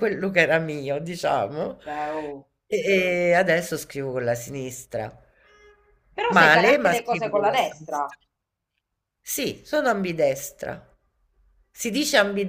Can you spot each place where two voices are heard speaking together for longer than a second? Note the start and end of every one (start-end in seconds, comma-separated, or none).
6.3-8.1